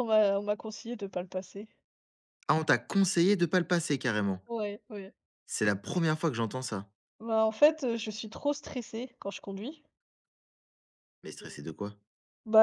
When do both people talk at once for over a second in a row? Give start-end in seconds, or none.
none